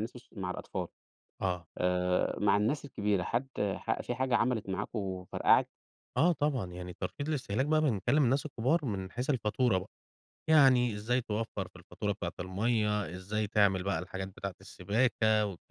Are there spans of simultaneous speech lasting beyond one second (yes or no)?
no